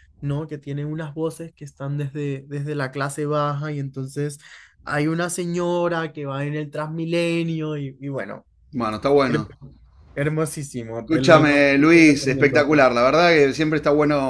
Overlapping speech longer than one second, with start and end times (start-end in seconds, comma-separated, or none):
11.0-12.7